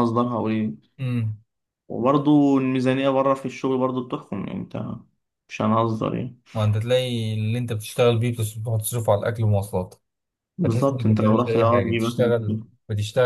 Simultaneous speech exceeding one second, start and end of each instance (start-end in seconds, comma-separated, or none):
10.6-12.7